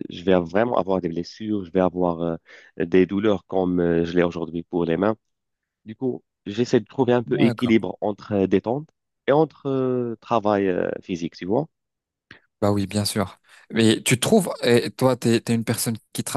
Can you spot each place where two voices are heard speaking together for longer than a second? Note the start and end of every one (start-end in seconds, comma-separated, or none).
none